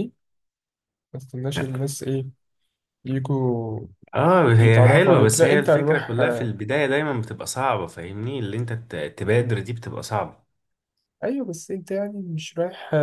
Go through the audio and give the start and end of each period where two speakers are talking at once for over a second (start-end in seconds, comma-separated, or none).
4.6-6.5